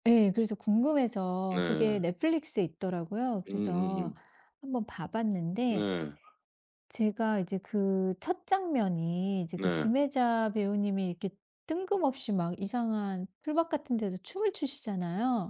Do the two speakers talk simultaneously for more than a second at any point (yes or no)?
no